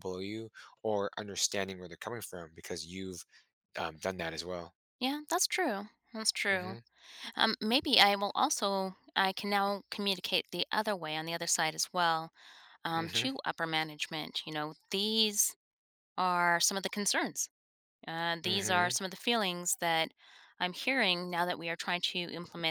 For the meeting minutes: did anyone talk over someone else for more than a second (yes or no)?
no